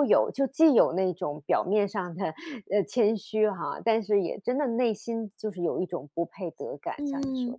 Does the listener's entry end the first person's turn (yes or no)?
yes